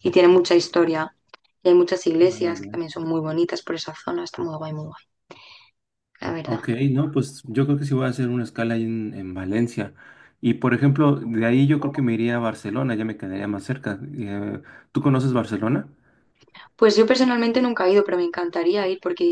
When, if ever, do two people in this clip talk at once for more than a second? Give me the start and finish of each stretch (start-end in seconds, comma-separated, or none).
none